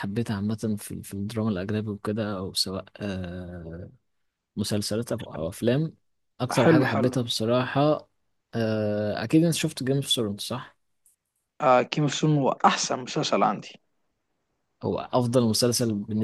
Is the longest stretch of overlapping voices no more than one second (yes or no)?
yes